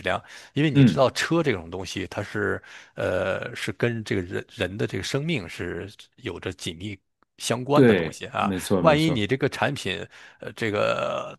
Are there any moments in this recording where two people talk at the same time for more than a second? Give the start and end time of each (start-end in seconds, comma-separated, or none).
7.7-9.3